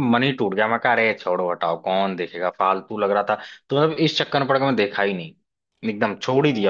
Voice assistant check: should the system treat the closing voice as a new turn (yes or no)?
yes